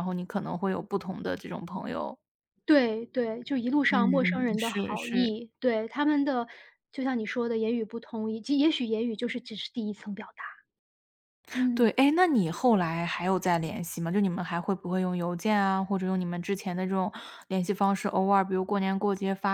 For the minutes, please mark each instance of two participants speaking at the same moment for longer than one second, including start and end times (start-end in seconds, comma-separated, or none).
3.9-5.3